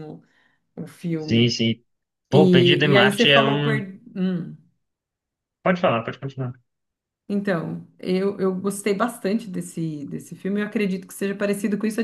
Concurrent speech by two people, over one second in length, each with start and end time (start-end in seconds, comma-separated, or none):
2.3-3.7